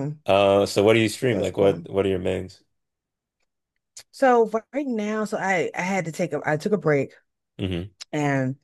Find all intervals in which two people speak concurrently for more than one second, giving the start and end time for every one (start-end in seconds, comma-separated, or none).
none